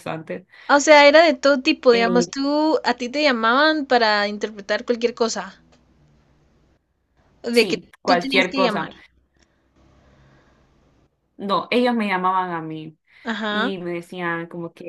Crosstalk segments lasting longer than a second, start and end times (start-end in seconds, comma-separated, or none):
7.5-8.9